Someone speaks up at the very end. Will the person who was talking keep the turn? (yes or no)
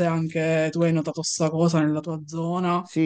no